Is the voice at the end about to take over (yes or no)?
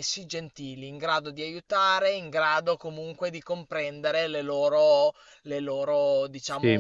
yes